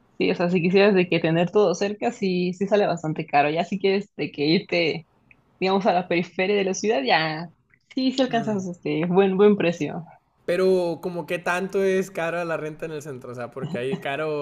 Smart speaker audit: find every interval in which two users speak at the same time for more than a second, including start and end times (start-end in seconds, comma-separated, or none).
none